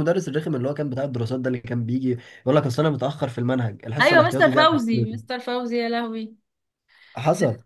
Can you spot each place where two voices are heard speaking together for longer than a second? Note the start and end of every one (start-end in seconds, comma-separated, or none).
4.0-5.4